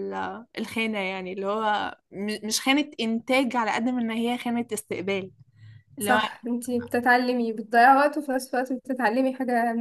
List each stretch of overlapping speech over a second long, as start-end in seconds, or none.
none